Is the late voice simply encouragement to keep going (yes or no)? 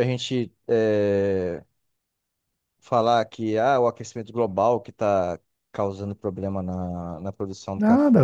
no